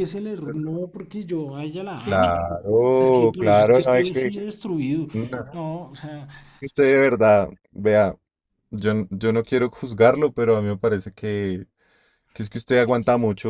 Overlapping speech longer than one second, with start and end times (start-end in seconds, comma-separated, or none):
3.0-4.3